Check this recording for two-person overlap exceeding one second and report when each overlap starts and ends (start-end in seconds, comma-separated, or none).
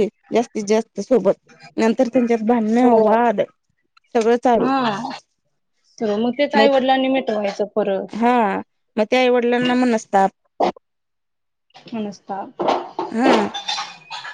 none